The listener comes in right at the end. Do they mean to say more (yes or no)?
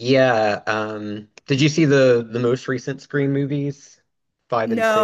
yes